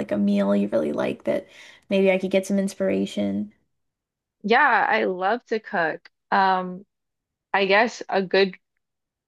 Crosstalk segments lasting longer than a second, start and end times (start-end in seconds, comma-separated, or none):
none